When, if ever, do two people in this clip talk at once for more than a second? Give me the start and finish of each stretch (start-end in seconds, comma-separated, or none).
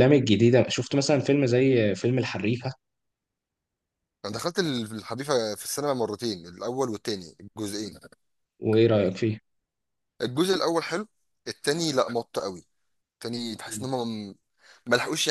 none